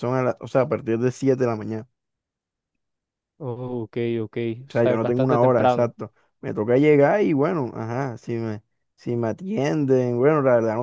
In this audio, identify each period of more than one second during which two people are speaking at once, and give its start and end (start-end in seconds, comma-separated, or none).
4.6-5.9